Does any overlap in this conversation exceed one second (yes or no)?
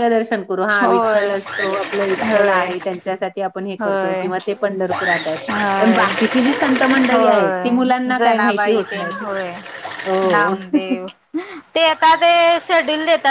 yes